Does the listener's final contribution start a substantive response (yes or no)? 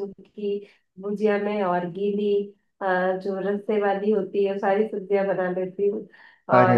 no